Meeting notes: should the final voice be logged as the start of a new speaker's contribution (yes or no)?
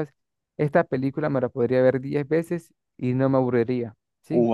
yes